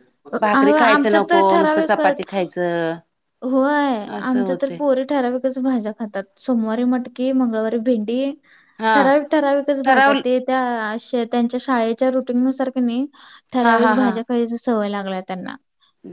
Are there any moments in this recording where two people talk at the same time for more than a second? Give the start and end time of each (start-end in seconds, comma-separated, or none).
0.6-2.2